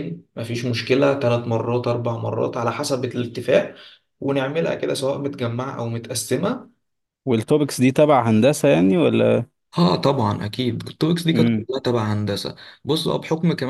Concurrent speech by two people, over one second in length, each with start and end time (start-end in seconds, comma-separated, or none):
none